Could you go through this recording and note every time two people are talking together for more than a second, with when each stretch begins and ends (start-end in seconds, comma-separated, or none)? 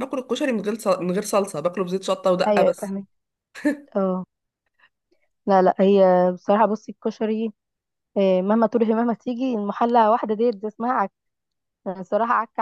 none